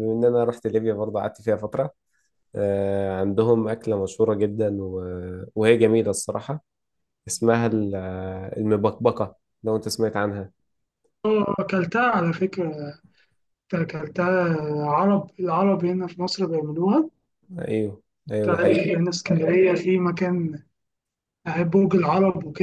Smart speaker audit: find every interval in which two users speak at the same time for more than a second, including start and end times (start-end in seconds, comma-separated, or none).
none